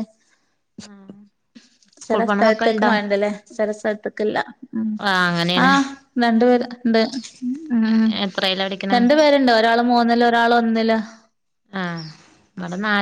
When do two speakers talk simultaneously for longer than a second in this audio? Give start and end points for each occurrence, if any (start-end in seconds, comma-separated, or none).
none